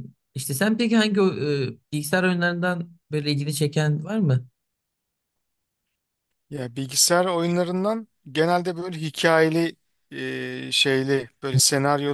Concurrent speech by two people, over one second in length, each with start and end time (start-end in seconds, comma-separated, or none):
none